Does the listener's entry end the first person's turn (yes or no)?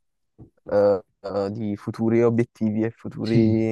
no